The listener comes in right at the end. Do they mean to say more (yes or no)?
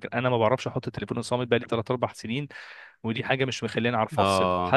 no